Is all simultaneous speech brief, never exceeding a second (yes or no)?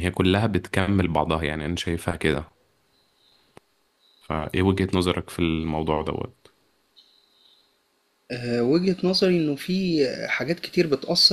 yes